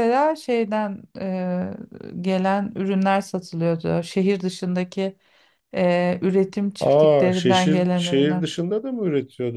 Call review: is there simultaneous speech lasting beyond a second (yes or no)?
yes